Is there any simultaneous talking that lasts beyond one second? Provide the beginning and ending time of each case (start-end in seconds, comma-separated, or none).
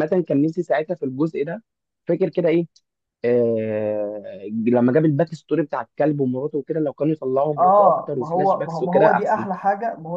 7.6-9.4